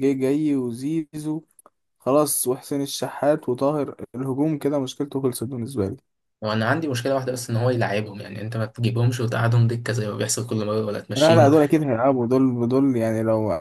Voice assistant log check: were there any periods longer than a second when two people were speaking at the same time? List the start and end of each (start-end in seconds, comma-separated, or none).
none